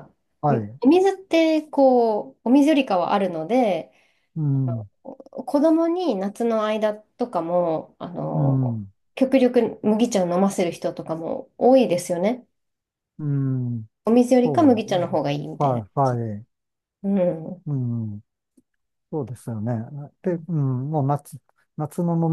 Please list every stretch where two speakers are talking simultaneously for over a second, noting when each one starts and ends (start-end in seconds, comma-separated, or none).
14.4-16.2